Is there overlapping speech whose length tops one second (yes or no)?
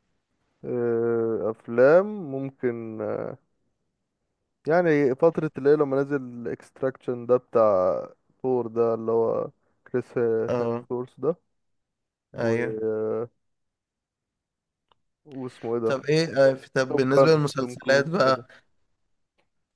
yes